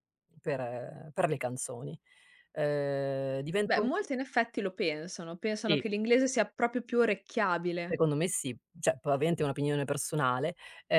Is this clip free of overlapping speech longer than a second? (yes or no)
yes